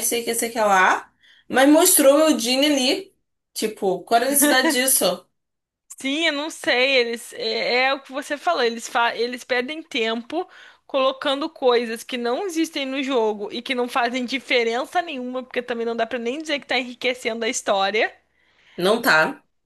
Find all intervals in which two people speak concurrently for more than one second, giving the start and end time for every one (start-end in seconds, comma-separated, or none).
none